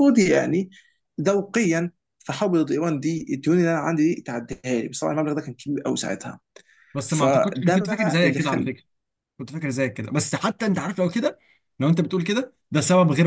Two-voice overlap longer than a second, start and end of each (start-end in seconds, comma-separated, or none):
7.1-8.7